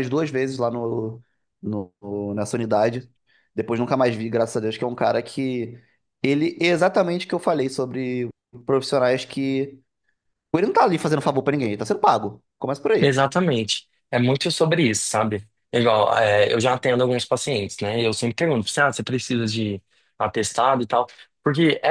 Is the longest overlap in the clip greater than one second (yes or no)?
no